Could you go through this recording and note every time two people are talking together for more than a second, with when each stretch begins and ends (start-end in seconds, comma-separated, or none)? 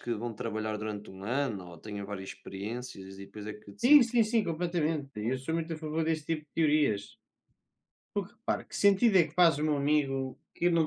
none